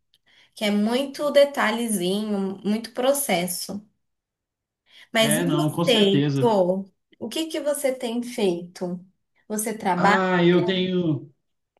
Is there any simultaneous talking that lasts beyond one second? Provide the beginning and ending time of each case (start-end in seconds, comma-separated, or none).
5.2-6.5